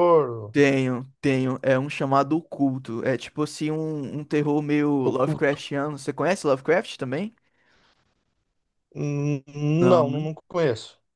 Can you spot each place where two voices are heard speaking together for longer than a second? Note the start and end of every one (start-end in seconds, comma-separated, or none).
none